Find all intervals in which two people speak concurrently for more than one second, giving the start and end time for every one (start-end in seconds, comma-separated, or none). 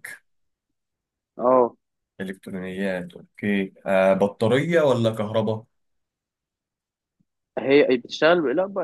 none